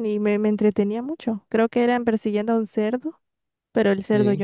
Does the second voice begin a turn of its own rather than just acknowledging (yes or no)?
no